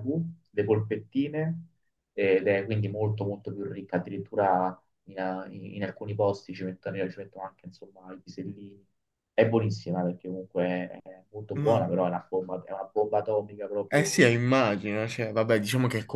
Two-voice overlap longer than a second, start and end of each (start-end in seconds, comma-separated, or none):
none